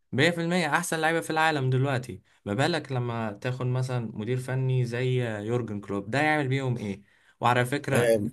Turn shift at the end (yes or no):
no